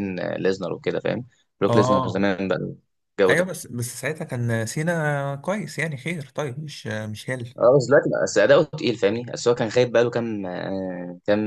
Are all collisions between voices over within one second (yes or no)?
yes